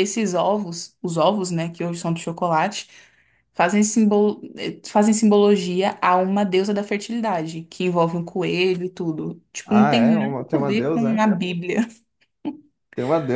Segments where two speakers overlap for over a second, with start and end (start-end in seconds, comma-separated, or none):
9.6-11.3